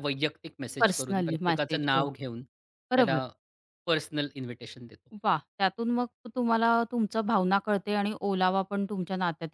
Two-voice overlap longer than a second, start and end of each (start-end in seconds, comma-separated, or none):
0.8-2.0